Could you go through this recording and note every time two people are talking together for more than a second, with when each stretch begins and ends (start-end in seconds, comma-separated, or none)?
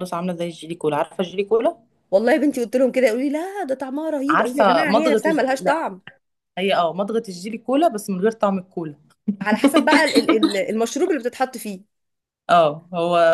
4.3-5.8